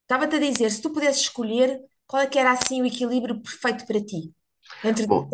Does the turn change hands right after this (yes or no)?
yes